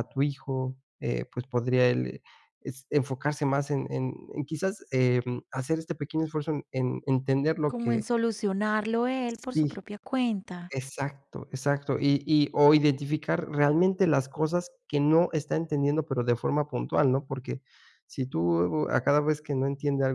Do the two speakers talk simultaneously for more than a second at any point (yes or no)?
no